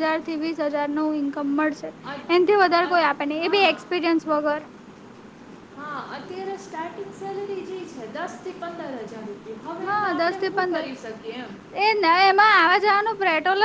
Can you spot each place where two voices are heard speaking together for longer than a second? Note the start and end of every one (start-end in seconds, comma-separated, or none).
2.4-3.7